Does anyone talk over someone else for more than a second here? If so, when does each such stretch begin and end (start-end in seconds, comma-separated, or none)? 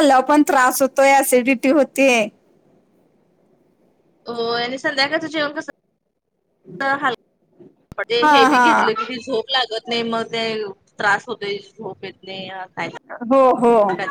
none